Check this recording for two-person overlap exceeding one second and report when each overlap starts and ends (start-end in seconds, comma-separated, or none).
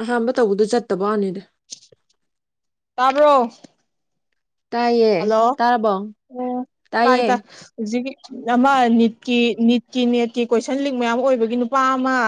none